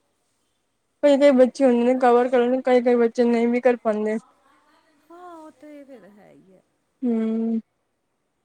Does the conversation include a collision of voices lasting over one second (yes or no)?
no